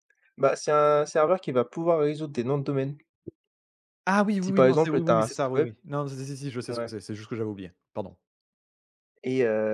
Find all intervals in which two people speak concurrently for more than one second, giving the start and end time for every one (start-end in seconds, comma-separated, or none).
4.4-5.7